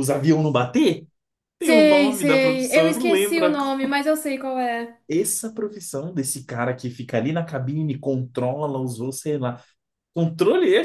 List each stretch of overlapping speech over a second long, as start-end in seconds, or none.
1.6-3.9